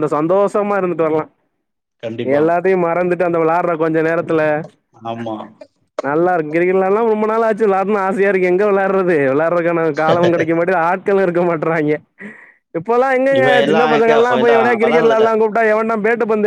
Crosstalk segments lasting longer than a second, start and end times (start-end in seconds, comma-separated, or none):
13.4-15.3